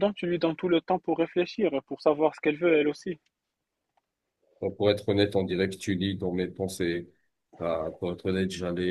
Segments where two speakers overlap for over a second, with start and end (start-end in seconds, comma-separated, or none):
none